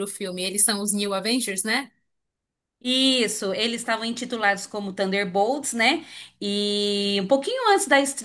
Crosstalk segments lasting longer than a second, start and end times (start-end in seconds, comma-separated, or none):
none